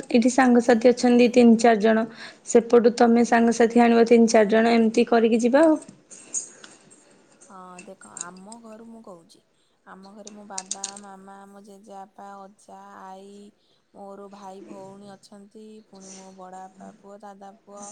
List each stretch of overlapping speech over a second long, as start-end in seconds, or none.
none